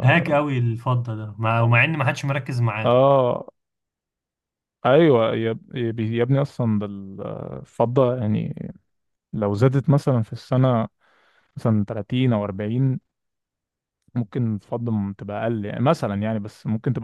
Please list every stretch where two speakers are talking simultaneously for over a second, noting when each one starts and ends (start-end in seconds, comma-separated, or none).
none